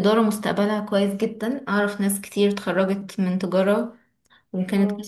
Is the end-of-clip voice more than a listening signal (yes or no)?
no